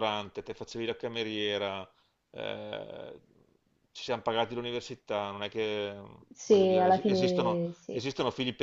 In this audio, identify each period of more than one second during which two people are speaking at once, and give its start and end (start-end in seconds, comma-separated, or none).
6.4-8.0